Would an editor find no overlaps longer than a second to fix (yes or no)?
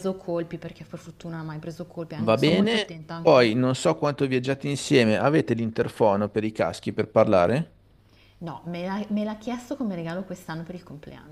no